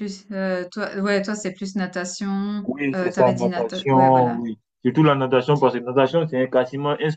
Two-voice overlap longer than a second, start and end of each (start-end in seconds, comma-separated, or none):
2.6-4.4